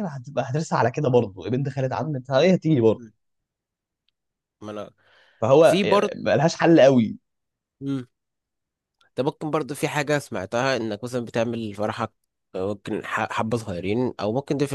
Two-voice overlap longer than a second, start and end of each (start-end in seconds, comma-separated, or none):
none